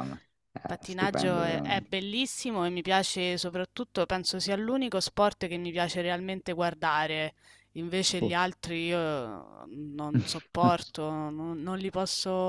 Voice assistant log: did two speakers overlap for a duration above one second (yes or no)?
yes